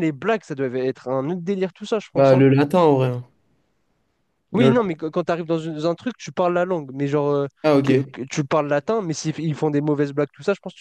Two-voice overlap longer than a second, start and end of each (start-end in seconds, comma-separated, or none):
none